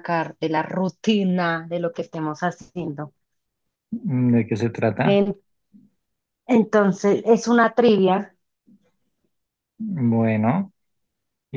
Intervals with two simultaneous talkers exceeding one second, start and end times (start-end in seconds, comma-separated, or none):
none